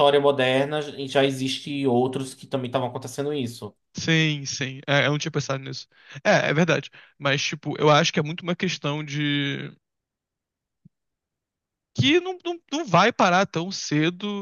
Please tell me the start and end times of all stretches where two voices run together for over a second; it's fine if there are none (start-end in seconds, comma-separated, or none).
none